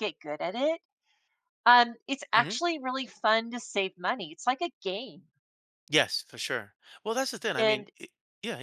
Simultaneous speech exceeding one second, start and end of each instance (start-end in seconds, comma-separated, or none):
none